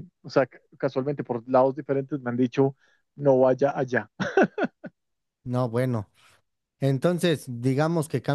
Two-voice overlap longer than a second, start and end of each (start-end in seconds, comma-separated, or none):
none